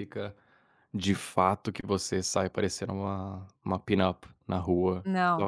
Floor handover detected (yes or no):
no